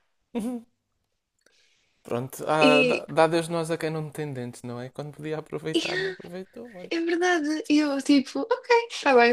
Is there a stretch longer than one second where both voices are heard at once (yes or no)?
no